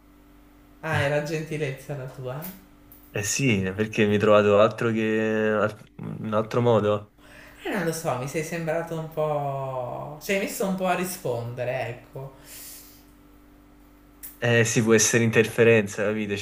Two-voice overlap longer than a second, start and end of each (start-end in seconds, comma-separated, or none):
none